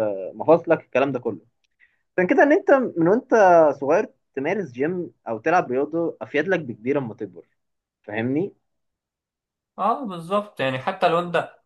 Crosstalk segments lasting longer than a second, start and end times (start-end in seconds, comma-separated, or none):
none